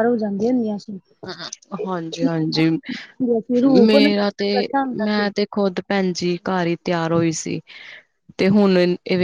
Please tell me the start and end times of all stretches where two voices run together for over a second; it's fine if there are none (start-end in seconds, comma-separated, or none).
none